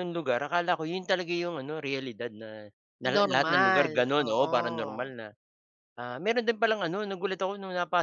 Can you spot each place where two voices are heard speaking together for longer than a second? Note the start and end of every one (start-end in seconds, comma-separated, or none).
3.1-5.1